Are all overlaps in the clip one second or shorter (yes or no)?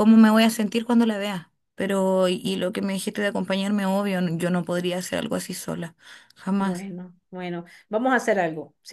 yes